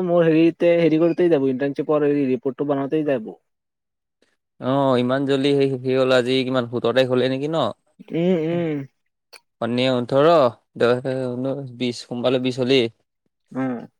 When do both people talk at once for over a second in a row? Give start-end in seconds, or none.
none